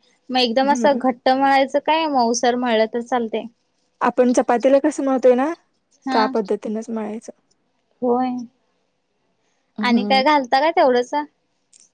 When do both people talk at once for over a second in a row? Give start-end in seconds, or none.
none